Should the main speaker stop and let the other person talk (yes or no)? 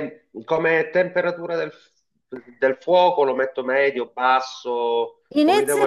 yes